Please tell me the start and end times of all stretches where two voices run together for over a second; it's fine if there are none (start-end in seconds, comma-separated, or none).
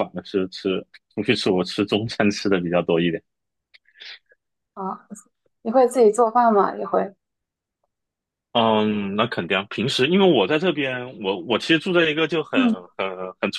none